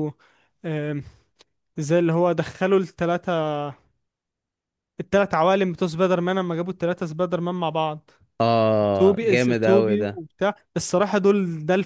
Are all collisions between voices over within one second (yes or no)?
no